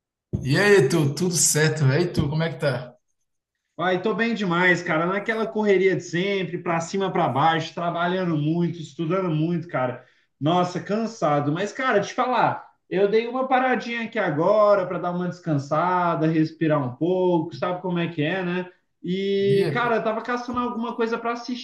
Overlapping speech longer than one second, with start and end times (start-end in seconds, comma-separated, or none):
none